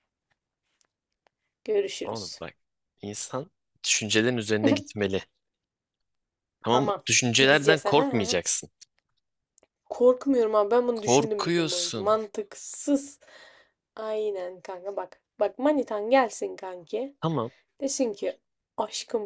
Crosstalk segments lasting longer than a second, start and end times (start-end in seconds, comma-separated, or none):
6.7-8.4, 10.9-12.2